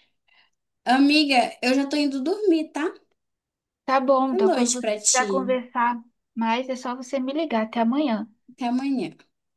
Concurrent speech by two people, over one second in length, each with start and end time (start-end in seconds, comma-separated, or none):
4.3-5.6